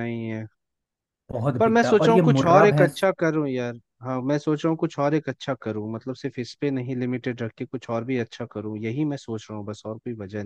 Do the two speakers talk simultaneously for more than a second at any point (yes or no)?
yes